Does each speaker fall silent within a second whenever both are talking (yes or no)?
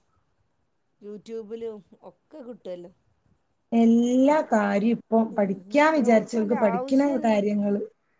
no